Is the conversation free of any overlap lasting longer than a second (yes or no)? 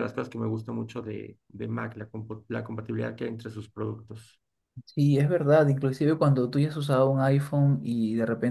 yes